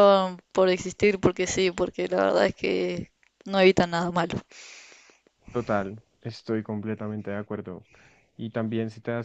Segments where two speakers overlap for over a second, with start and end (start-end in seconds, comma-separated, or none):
none